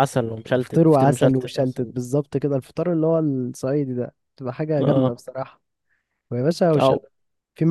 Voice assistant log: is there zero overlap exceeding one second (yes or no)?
no